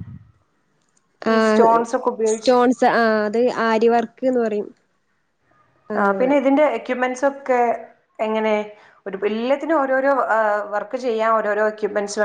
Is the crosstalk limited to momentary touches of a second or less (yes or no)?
yes